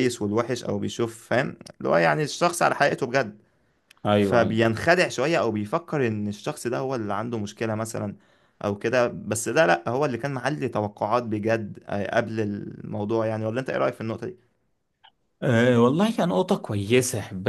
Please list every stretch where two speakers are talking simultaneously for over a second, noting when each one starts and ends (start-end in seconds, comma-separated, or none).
none